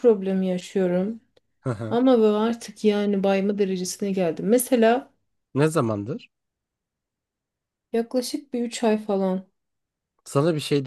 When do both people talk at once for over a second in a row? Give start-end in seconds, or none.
none